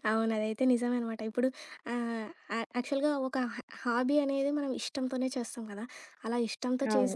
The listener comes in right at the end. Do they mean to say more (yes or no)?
no